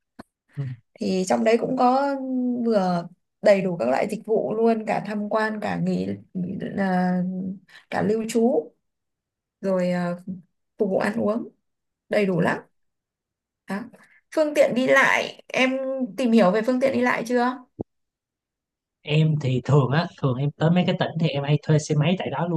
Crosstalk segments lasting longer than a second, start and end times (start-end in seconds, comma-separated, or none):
none